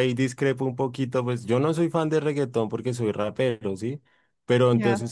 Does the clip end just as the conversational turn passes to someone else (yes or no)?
no